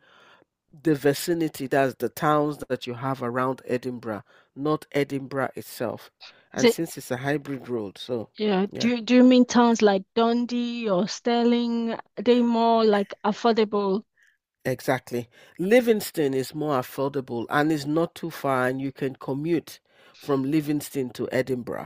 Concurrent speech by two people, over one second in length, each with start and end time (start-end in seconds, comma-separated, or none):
none